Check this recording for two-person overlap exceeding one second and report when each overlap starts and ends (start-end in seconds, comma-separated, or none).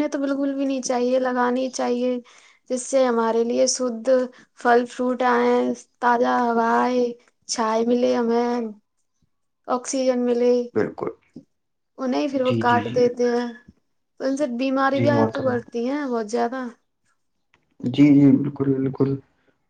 none